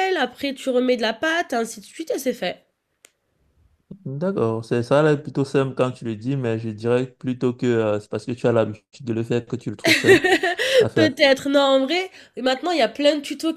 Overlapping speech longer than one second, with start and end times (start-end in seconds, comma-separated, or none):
none